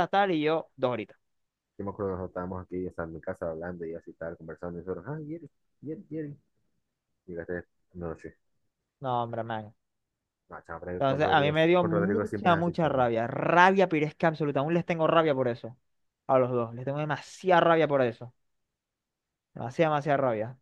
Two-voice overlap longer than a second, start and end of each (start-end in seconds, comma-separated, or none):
11.0-13.1